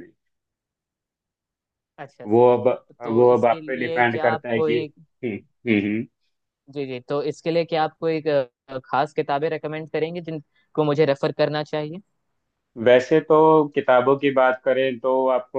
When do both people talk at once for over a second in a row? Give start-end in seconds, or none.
3.1-4.8